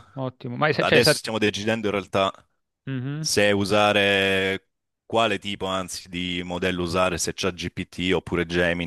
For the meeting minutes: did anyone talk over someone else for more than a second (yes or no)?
no